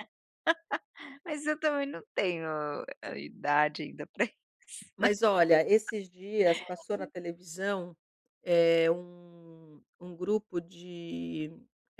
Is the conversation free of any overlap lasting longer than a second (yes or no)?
yes